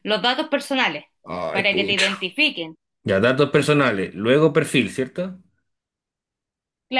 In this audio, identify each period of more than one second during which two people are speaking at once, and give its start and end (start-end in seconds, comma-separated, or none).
none